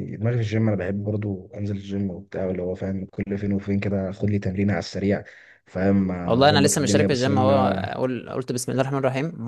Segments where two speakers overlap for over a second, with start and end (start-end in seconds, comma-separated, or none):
6.2-7.8